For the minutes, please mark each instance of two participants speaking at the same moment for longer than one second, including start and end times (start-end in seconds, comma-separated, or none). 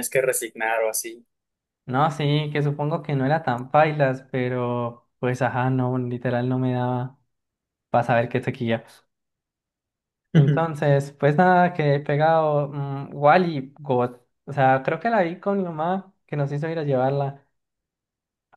none